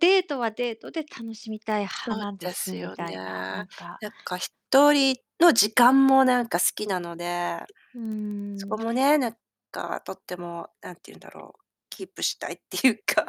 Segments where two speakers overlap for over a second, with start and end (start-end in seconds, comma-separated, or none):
2.0-3.6